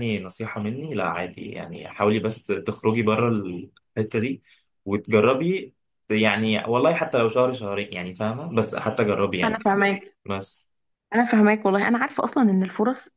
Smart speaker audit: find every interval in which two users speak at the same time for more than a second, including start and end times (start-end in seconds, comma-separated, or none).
none